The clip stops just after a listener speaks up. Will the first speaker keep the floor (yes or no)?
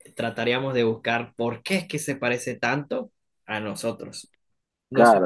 no